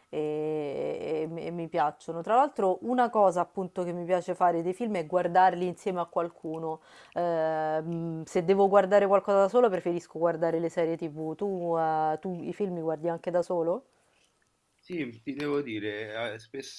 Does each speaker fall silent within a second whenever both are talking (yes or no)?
yes